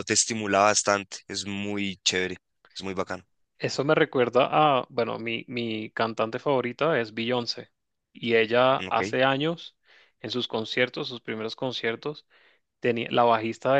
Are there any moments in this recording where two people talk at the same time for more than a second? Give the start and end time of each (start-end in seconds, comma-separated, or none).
none